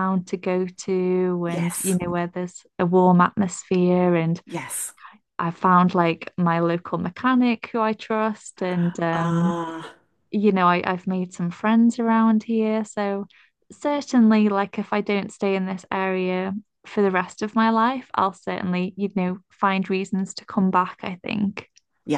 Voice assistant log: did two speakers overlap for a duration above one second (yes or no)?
no